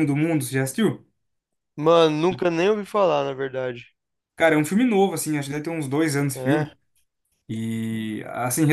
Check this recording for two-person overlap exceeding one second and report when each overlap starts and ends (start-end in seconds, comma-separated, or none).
none